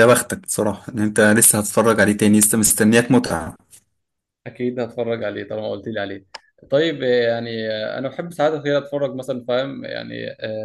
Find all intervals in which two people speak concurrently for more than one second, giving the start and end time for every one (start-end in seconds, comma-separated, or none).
none